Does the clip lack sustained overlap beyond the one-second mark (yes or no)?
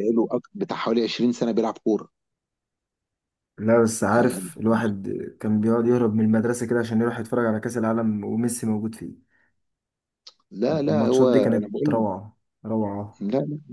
no